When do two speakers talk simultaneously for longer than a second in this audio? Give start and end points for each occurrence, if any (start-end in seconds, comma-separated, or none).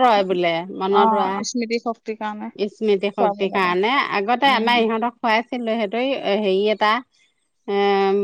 0.9-2.5